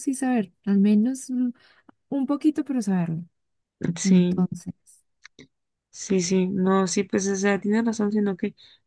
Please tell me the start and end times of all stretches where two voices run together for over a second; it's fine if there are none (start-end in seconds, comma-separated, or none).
none